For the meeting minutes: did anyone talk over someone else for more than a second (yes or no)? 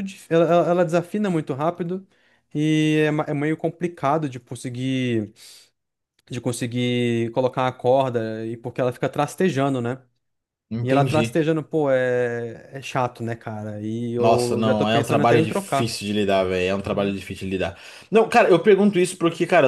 yes